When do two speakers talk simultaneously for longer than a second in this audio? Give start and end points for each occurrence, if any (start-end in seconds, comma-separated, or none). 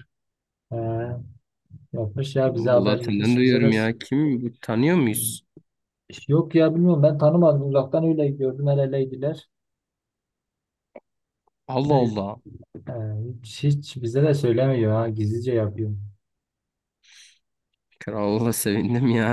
2.5-3.7